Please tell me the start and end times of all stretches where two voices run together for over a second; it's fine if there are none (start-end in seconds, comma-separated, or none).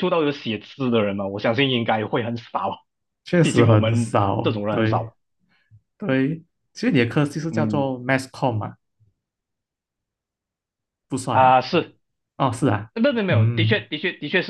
3.4-5.1